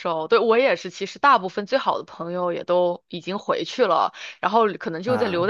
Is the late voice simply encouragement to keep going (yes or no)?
yes